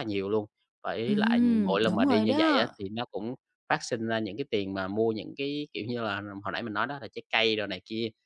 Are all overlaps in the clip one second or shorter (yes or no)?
no